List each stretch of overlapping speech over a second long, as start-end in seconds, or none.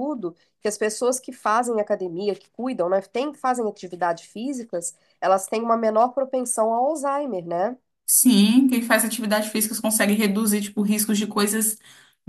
none